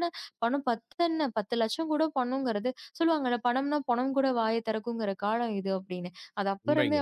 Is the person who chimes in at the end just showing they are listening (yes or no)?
yes